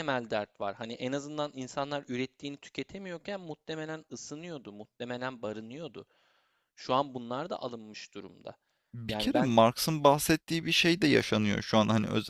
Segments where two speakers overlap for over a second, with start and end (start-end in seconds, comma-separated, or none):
none